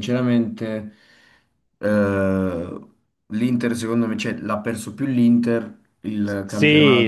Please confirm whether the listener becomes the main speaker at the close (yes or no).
yes